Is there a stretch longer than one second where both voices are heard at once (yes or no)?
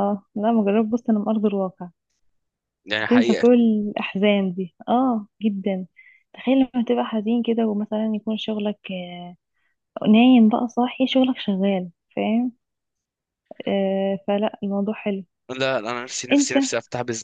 no